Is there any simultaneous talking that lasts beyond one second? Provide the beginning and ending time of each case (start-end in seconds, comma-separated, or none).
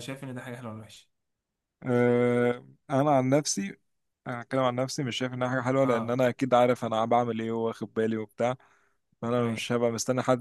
none